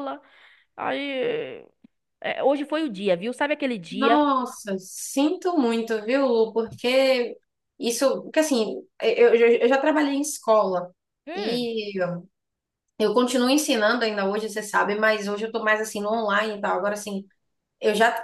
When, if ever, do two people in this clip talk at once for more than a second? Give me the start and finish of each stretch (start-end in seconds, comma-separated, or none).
none